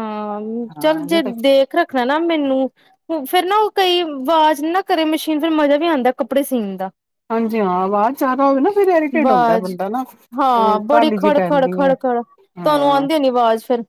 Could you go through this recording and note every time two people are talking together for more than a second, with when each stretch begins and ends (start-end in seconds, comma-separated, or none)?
10.4-11.9